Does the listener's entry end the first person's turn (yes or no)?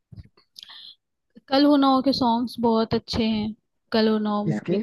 no